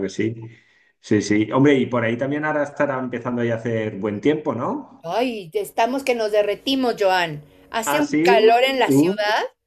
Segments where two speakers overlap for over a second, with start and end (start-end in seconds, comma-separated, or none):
none